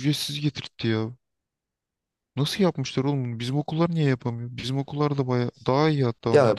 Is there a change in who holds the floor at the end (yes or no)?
yes